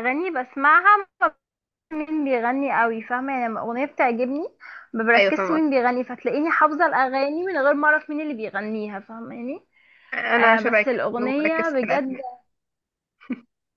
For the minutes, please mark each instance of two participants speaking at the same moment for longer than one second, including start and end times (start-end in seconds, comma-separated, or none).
10.4-12.2